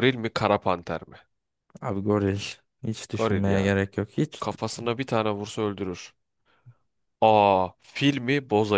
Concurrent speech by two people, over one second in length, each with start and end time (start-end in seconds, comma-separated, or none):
none